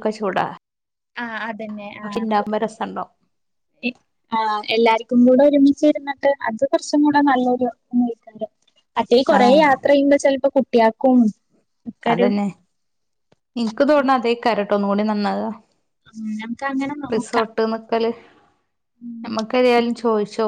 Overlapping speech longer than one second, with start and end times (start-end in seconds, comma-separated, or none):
none